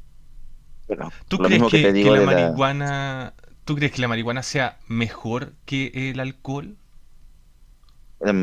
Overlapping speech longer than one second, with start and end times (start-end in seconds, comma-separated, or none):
1.3-2.6